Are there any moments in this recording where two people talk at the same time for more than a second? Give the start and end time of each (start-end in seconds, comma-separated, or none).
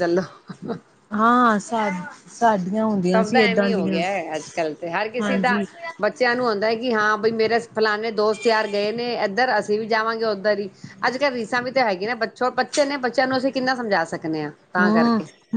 none